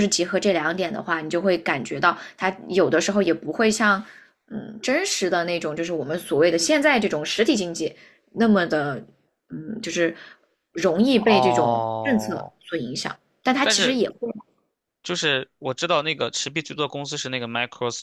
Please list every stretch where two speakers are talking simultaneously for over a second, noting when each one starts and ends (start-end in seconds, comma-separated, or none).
11.2-12.5